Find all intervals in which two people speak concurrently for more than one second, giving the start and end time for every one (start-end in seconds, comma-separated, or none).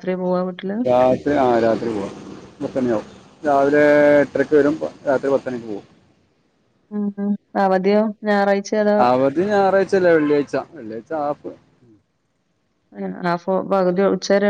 none